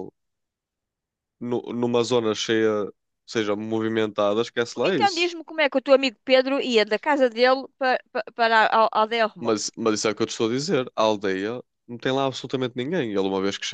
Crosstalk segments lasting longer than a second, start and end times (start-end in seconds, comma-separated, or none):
none